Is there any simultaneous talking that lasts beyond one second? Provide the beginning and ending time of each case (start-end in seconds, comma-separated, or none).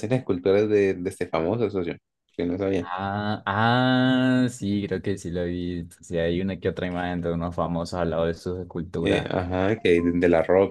none